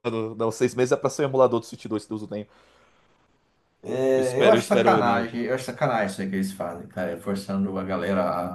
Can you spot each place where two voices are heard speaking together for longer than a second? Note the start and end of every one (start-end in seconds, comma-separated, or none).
4.1-5.4